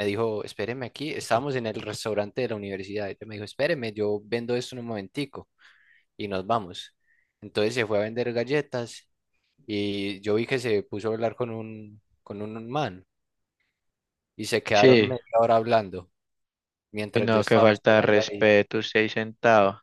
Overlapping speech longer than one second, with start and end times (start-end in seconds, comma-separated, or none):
17.1-18.5